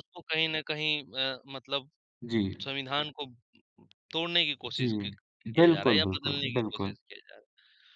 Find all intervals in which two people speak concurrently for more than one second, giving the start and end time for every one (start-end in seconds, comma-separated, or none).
5.6-7.0